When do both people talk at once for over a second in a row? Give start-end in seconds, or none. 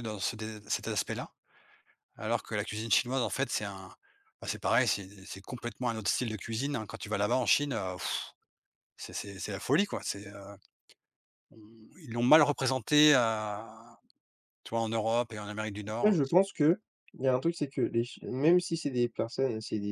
none